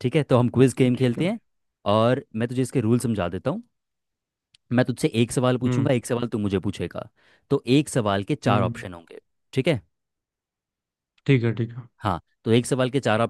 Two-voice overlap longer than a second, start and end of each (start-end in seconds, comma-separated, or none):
none